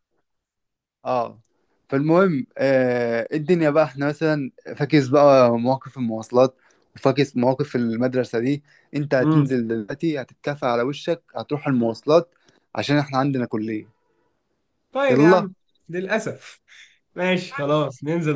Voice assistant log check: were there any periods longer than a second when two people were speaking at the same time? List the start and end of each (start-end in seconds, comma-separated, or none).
none